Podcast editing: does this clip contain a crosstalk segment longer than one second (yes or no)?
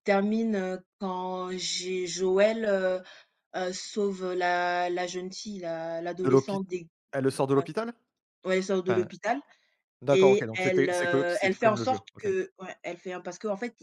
yes